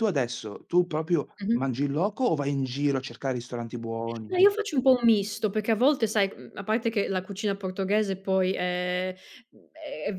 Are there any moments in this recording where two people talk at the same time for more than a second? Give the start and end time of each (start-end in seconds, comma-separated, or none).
none